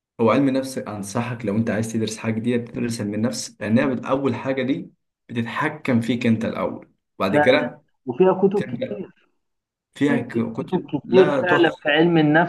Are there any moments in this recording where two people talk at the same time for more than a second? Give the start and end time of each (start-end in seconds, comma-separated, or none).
10.1-11.9